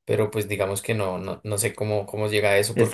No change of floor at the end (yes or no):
no